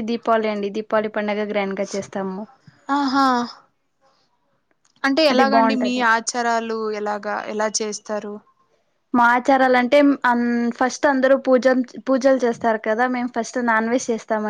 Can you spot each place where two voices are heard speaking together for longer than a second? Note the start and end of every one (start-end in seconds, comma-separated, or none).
none